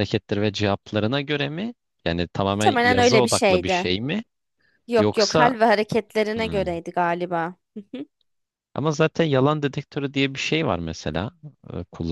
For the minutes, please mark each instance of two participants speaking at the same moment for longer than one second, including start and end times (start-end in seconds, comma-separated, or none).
2.5-3.9